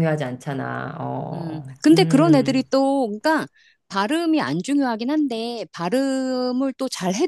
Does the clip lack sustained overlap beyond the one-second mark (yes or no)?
no